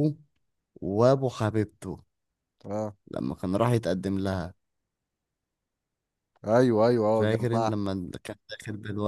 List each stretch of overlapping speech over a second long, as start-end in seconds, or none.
none